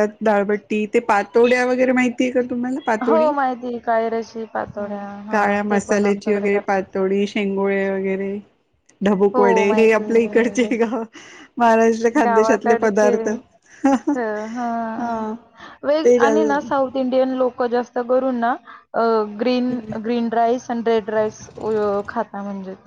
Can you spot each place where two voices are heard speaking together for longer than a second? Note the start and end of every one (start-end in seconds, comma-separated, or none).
5.3-6.8, 9.3-10.7